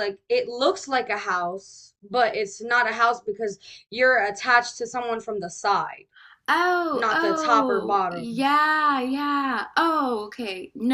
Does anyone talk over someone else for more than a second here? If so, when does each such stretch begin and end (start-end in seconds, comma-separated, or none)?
6.9-8.4